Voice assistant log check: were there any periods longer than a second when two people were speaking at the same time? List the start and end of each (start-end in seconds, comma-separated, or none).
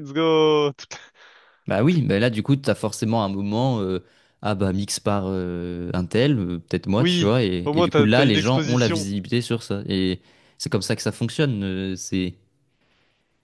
7.0-9.1